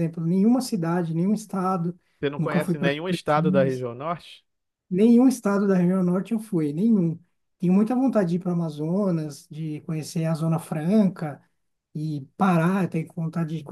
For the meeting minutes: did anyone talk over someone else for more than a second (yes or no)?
yes